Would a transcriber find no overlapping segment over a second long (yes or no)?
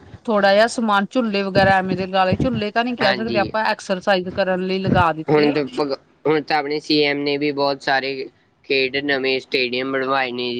yes